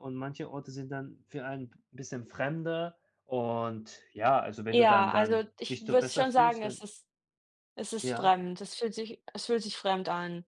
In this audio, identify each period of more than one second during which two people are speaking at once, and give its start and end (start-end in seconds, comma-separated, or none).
4.7-6.8